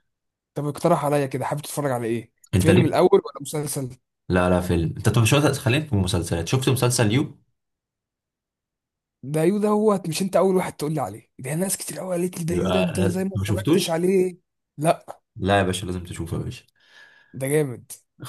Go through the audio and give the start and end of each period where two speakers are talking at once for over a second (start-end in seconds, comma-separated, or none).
12.5-14.0